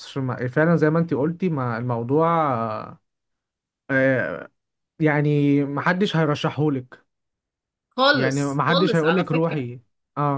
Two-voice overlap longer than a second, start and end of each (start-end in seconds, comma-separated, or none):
8.1-9.6